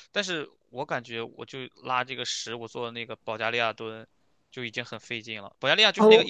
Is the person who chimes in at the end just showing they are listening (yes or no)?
yes